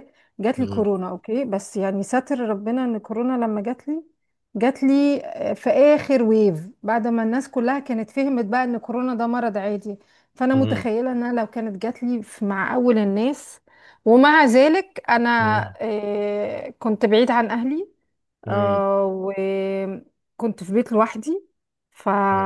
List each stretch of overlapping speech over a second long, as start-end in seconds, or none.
none